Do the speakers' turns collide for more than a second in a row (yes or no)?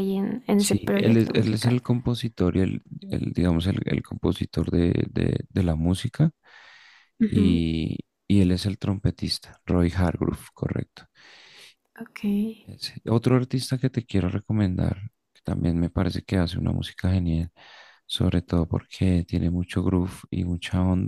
yes